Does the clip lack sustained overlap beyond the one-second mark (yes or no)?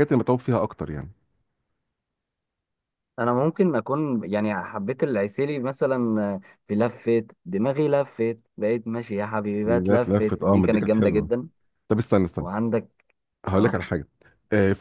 no